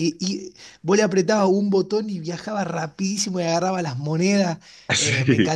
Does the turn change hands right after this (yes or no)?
no